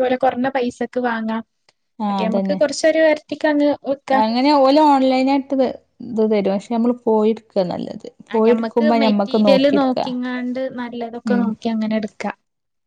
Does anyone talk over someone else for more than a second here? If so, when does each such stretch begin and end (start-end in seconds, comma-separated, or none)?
8.3-10.1